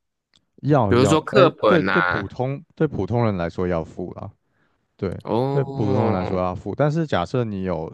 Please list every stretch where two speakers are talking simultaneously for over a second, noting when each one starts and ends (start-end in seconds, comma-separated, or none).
0.9-2.2